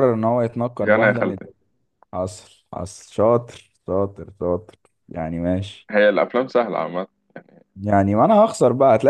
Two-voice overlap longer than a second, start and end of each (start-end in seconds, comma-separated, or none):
none